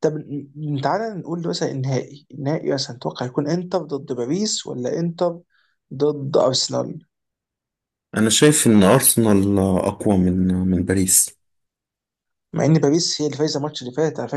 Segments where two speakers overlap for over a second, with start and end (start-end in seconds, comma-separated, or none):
none